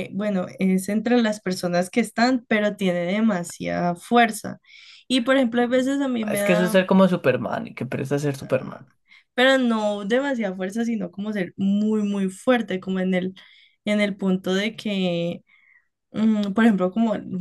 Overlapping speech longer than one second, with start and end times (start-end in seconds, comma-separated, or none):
none